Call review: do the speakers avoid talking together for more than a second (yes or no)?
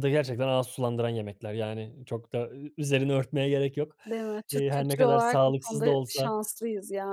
no